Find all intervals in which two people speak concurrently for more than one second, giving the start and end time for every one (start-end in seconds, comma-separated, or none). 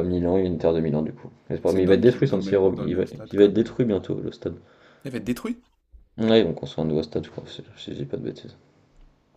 1.6-3.7